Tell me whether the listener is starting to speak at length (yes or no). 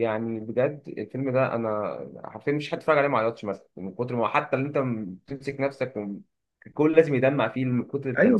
yes